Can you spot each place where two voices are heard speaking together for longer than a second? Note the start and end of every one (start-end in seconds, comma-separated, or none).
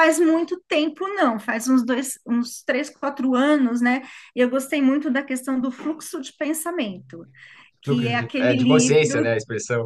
7.8-9.3